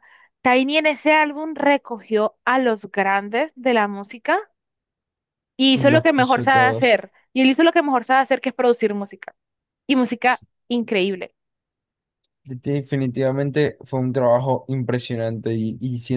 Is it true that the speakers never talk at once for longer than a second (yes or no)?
no